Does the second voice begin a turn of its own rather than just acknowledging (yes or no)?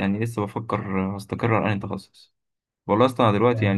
no